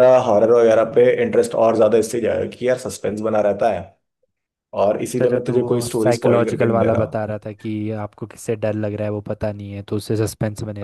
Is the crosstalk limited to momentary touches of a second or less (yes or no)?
no